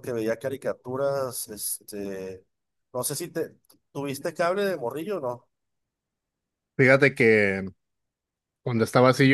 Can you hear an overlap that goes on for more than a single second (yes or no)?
no